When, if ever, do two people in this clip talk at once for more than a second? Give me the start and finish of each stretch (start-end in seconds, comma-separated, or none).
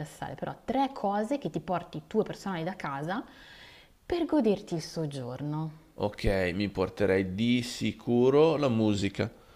none